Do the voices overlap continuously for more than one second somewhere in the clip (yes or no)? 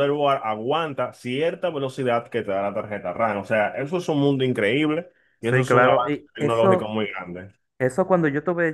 yes